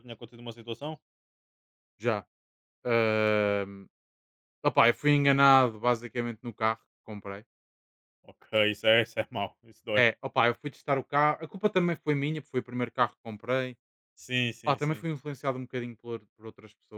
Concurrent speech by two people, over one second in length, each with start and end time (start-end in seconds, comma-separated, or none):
none